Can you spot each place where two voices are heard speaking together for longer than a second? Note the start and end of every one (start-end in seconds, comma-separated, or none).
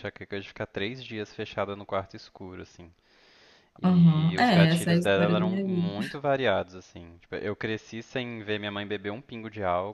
3.8-5.9